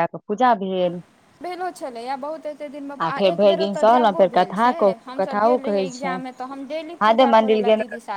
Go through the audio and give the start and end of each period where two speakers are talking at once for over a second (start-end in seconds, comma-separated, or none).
3.2-6.2